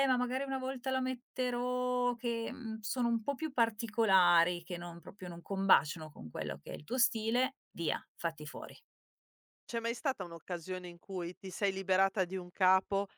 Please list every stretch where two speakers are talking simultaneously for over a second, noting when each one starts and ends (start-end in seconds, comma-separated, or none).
none